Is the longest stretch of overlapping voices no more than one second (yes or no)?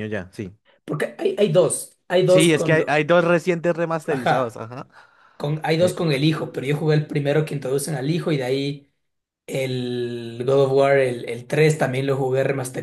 yes